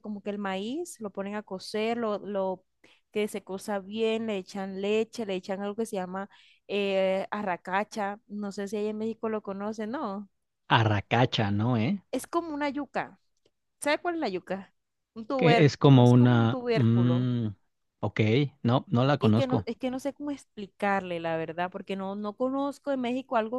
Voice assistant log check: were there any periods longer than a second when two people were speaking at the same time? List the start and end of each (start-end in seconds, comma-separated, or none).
15.4-17.3